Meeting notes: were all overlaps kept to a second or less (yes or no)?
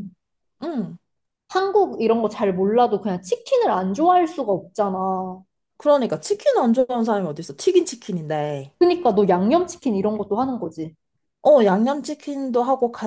yes